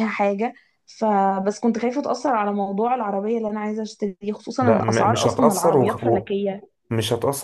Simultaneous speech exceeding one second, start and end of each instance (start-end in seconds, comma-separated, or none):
4.6-6.3